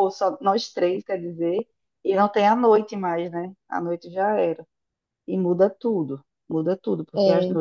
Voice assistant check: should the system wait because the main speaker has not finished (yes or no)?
yes